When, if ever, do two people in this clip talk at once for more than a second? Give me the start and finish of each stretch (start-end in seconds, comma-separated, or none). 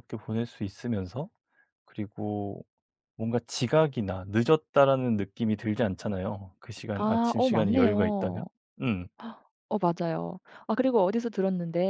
7.0-8.4